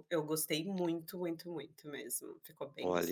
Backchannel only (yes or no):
no